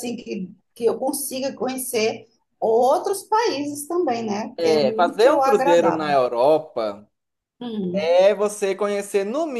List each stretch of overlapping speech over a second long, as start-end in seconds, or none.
4.6-6.2